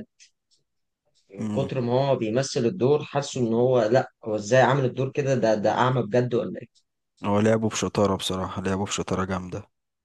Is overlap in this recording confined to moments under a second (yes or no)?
yes